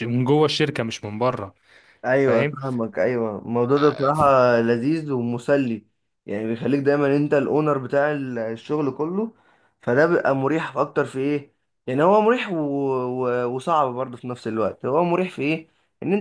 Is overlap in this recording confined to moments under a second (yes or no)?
yes